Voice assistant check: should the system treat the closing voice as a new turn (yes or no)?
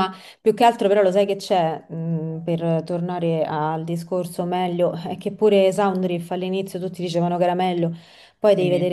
no